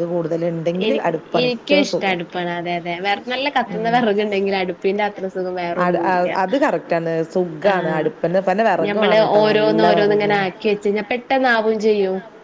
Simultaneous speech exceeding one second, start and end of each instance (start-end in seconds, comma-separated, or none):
8.8-10.6